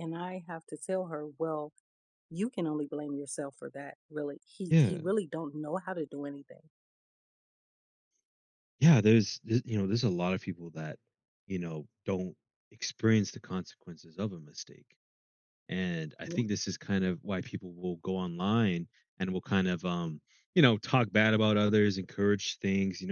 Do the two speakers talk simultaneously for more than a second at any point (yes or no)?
no